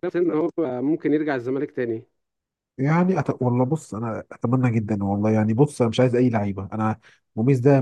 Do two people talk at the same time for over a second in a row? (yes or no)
no